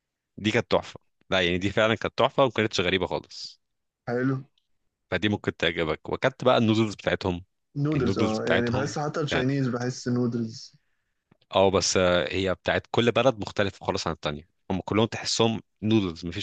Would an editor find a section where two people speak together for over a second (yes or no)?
yes